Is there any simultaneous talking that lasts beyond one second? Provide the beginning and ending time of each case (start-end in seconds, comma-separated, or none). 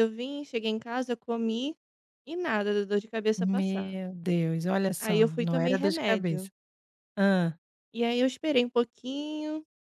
5.0-6.5